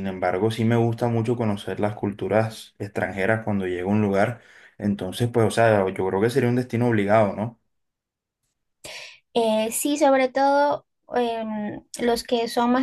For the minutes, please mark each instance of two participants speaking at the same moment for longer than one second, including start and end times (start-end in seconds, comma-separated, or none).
none